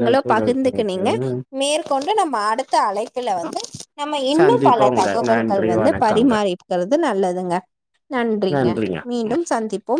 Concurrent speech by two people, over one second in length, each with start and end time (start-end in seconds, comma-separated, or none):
4.4-6.3